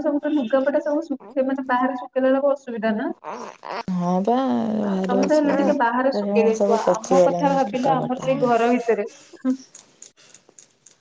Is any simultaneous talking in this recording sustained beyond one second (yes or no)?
yes